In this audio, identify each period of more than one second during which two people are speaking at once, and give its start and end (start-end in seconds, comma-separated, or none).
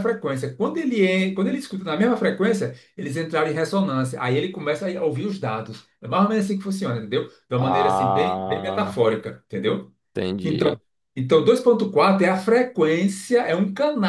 7.6-9.0